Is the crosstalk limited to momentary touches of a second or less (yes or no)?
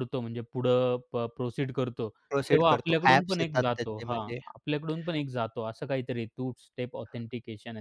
no